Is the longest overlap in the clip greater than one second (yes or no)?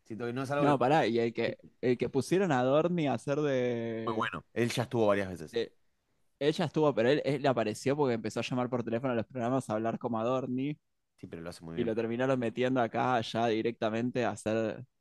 no